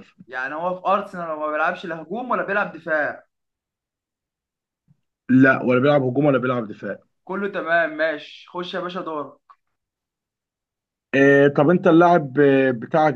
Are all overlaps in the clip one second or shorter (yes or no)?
yes